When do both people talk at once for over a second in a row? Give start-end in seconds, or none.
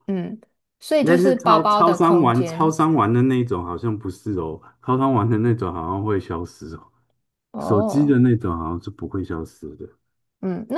1.0-2.8